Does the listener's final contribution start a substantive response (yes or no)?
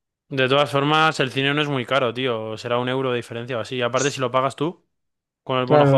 yes